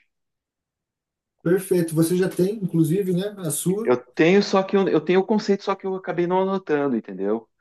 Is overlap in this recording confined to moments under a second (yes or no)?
yes